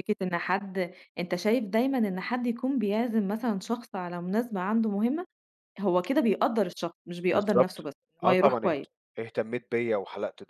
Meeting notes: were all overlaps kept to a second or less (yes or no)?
no